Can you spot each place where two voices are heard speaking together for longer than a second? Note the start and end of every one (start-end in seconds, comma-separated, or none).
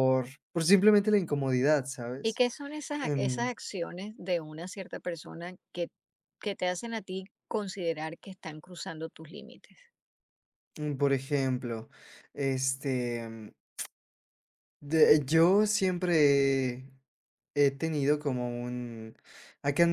none